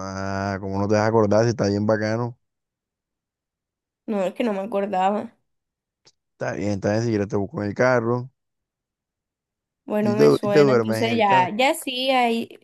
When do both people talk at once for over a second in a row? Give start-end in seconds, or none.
10.0-11.5